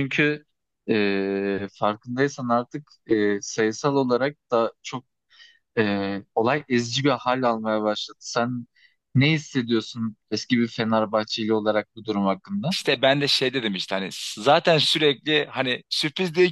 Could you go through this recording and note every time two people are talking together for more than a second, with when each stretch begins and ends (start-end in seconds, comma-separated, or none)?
none